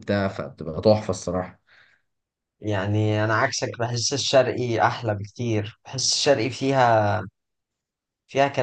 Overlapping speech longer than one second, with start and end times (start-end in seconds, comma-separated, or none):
none